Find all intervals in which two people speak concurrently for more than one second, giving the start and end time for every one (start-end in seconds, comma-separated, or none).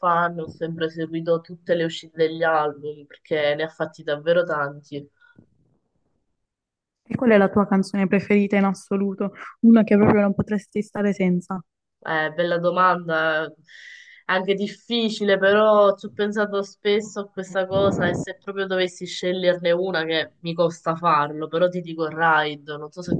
none